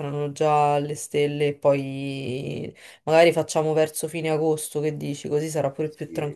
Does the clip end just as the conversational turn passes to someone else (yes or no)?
yes